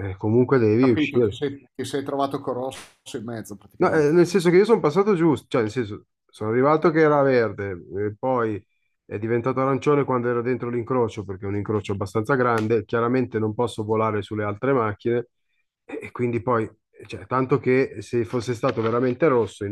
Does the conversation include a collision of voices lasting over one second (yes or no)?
no